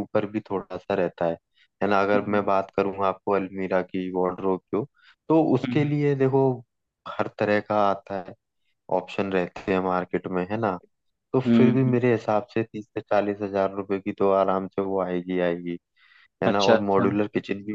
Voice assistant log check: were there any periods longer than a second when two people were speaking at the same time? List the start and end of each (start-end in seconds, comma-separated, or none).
none